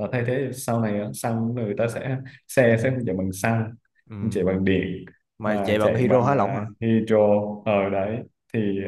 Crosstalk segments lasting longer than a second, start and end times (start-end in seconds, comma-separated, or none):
5.4-6.6